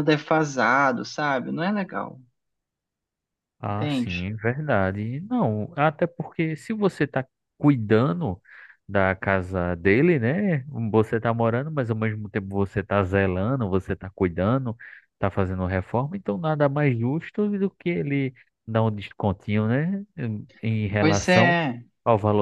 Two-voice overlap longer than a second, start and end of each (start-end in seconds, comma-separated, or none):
none